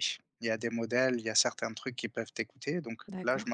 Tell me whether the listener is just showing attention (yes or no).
yes